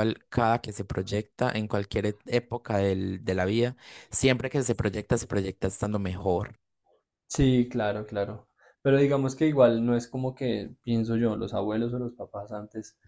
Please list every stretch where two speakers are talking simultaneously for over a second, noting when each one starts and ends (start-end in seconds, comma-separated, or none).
none